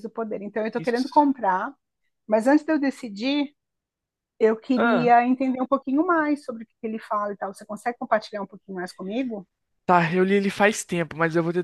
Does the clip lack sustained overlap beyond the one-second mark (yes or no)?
yes